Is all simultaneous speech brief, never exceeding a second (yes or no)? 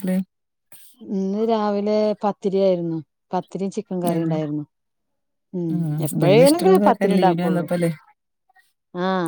no